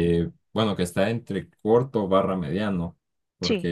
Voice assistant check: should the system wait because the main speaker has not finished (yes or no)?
yes